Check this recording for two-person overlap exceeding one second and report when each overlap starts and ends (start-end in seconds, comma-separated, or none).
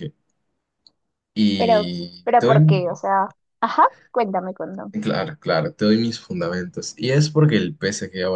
1.6-3.0